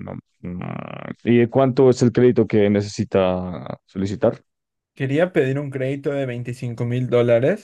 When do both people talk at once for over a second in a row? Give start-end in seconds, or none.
none